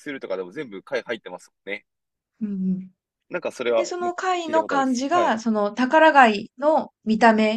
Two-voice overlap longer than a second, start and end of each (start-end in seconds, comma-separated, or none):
3.8-5.4